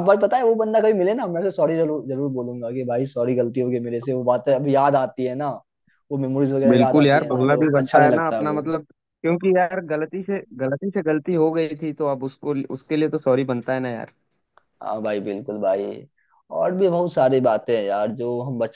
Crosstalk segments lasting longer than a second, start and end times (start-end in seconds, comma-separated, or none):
6.7-8.6